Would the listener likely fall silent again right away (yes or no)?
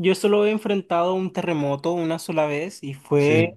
yes